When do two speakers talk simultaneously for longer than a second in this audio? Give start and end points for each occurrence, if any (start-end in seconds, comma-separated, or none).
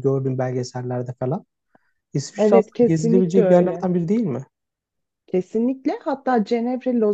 2.4-3.8